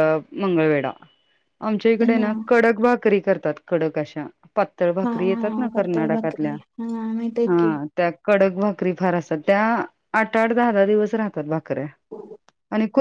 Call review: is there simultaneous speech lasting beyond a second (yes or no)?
yes